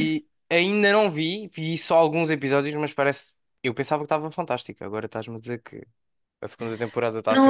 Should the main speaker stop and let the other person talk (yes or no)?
yes